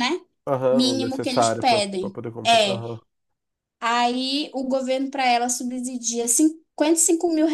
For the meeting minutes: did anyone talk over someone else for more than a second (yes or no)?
yes